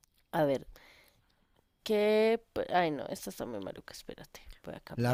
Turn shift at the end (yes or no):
yes